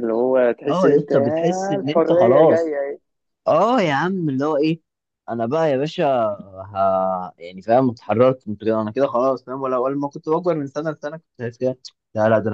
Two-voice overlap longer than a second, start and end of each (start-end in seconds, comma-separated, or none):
0.7-2.8